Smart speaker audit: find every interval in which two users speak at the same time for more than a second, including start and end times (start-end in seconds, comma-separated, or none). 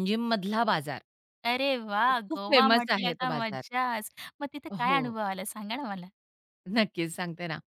2.1-3.6